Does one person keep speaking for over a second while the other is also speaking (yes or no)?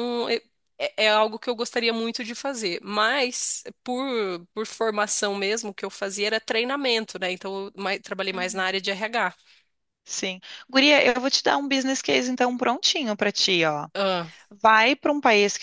no